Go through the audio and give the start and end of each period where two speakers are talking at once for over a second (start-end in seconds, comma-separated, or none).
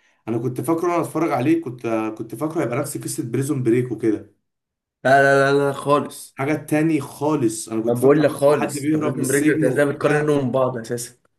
7.8-10.4